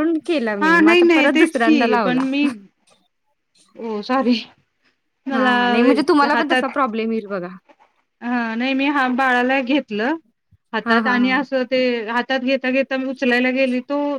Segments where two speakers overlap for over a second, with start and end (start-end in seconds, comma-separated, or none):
0.6-2.2